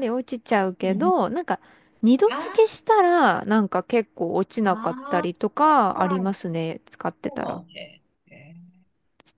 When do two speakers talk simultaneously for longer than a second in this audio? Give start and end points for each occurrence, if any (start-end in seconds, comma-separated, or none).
4.6-6.3